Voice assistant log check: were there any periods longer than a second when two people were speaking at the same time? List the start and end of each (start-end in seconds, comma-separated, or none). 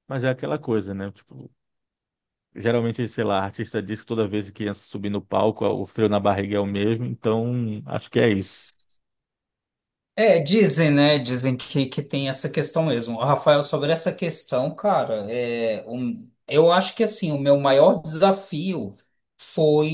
none